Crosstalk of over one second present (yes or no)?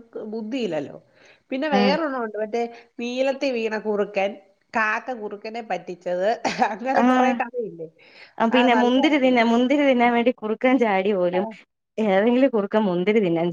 no